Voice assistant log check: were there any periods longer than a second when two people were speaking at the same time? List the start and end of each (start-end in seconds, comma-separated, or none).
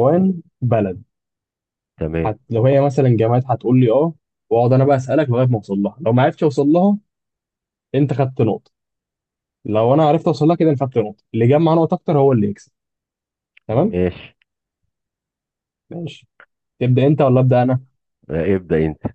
none